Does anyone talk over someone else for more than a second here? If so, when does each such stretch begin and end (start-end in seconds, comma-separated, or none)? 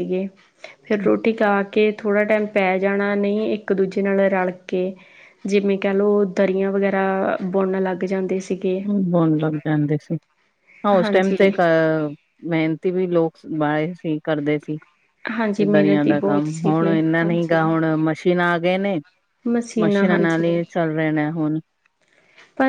15.6-17.7